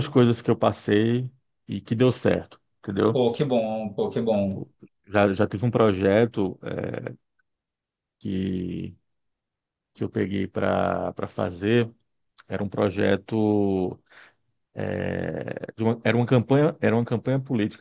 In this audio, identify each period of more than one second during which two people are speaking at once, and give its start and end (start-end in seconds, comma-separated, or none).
none